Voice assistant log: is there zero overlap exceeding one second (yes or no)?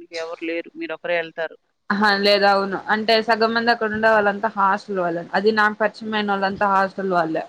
yes